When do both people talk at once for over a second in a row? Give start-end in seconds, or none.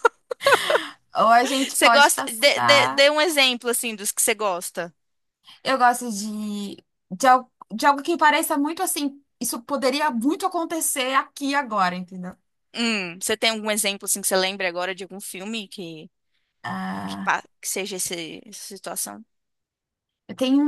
1.7-3.0